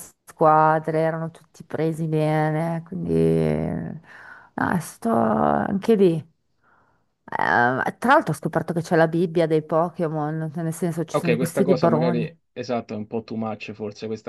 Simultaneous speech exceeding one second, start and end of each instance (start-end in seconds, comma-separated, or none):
11.1-12.4